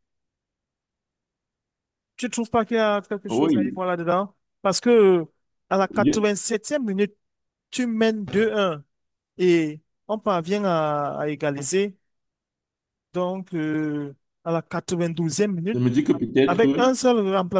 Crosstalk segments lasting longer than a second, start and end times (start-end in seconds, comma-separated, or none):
none